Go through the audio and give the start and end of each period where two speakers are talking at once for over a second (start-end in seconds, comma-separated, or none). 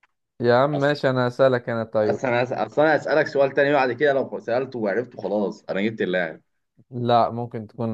none